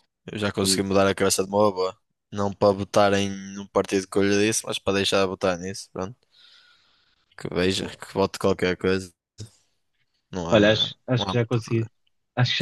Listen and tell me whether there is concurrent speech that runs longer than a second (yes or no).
yes